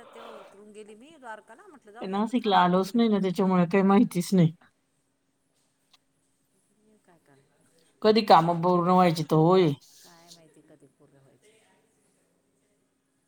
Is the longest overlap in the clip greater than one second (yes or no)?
yes